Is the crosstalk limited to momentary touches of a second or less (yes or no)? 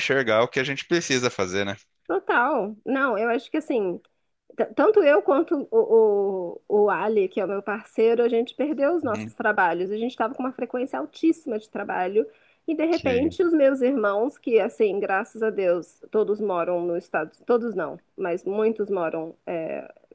yes